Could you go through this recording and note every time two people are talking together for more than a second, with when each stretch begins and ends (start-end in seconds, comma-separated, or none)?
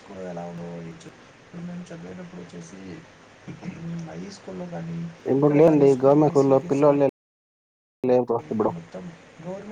5.4-7.0